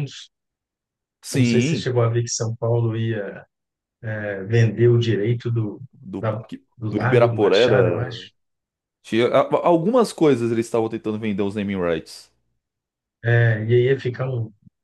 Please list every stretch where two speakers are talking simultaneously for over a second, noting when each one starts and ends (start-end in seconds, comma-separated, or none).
6.2-8.2